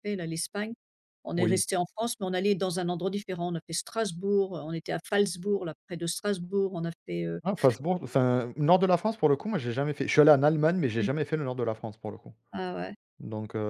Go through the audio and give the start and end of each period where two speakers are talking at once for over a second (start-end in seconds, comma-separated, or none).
none